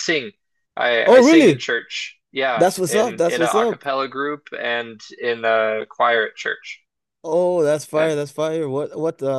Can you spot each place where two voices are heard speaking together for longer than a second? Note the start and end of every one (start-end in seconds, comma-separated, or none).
2.5-3.8